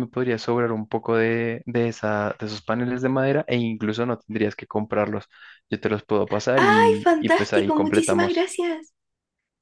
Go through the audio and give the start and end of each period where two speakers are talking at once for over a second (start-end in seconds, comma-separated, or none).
6.6-8.5